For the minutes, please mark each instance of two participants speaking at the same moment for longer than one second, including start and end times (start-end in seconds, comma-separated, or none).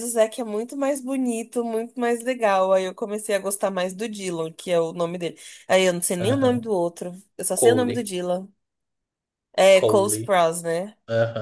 none